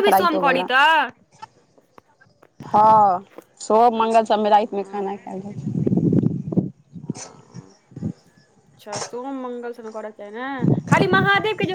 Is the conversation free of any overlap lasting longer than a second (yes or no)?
no